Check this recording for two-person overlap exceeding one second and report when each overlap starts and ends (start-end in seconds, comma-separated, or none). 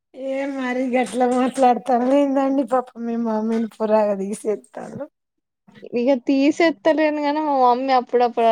none